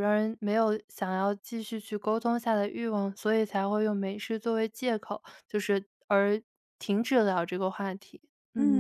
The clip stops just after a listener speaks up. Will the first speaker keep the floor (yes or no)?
no